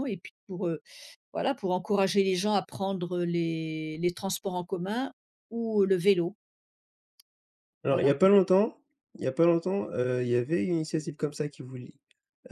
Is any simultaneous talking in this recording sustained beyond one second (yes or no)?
no